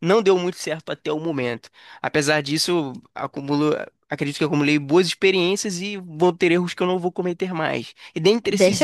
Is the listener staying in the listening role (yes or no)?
no